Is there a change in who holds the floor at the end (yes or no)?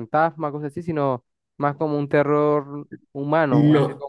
yes